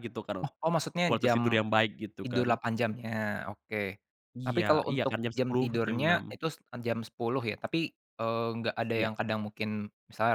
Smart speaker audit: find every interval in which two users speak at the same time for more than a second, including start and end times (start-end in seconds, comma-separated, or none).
4.5-6.3